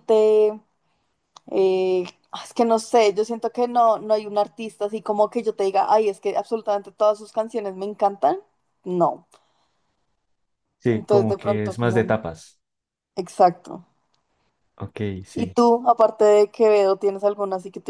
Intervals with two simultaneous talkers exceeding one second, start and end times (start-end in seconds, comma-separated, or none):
10.9-12.2